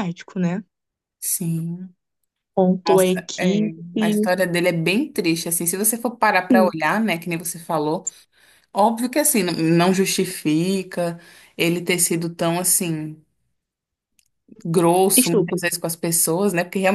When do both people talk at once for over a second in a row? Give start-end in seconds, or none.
2.9-4.3